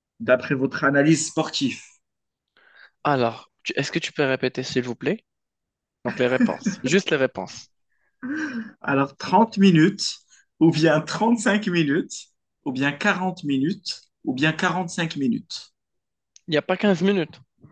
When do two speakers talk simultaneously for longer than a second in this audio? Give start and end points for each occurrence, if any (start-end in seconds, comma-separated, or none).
none